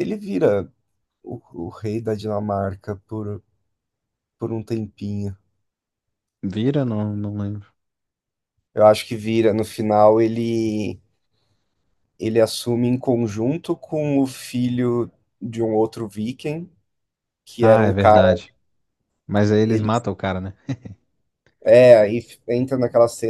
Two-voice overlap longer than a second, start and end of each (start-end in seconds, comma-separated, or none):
none